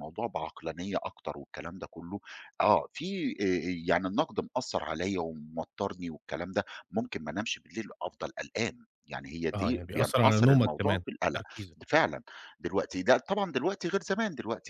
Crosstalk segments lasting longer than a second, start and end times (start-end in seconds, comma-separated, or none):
9.5-11.4